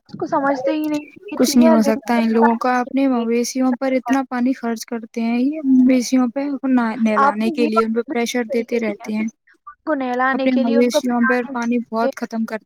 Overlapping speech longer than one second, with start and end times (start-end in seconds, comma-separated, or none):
7.3-9.2, 10.4-12.1